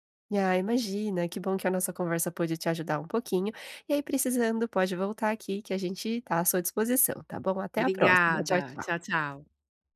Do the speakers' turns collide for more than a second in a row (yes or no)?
yes